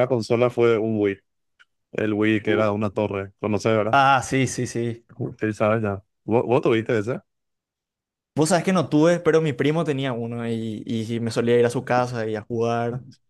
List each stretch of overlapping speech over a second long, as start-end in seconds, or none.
none